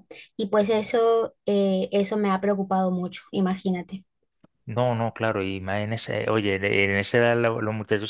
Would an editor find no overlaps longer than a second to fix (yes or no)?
yes